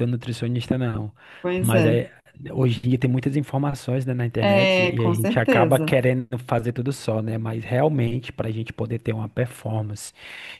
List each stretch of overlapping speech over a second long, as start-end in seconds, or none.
4.4-6.0